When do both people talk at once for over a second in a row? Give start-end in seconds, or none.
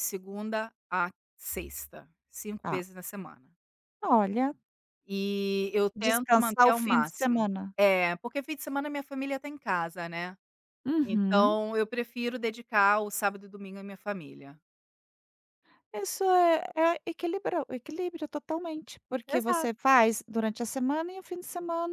5.9-7.7